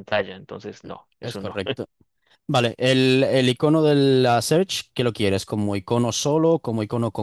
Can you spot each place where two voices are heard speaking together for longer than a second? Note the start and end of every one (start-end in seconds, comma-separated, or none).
none